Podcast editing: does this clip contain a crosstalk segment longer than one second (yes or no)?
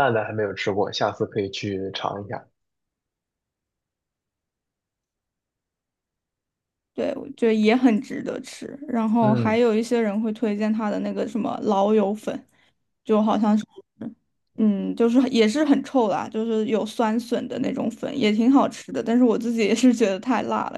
no